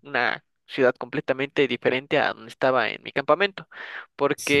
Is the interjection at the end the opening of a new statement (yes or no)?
no